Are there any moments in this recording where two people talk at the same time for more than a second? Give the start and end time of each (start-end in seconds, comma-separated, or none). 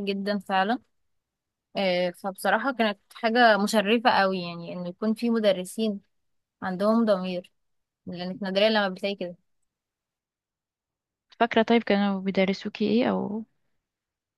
none